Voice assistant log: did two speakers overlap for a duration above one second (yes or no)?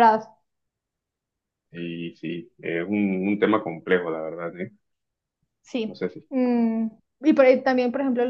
no